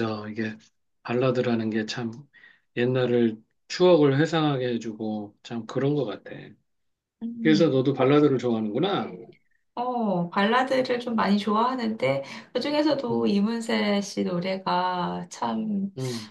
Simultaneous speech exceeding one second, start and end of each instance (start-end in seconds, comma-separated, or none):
none